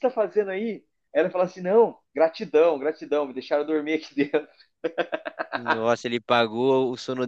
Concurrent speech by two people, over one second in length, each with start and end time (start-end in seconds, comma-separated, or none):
none